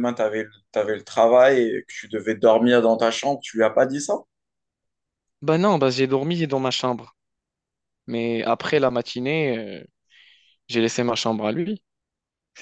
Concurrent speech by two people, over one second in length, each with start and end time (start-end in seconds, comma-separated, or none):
none